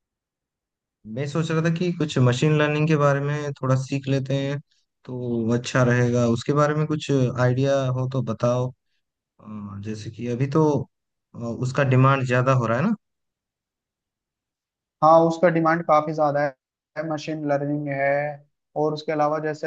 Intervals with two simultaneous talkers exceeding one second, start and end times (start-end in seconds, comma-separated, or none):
none